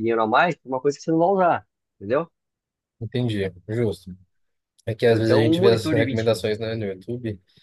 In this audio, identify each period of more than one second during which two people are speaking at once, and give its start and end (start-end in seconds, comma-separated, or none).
5.1-6.4